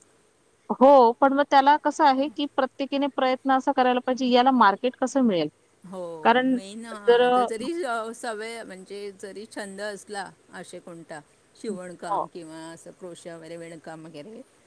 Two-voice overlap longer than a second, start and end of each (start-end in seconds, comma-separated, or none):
none